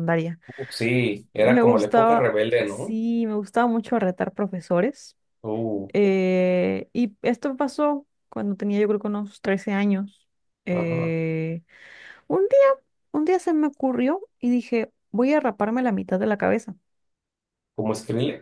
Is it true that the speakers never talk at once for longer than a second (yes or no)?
no